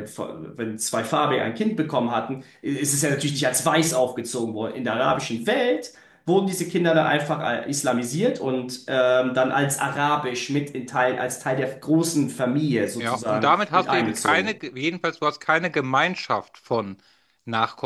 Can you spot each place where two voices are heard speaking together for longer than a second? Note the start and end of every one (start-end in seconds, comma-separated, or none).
13.0-14.6